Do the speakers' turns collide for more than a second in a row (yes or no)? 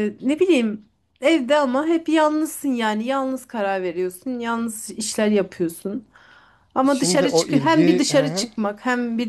yes